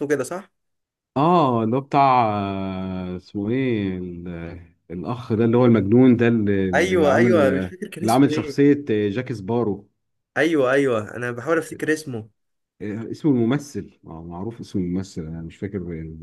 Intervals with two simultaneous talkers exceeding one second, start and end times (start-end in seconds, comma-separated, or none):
none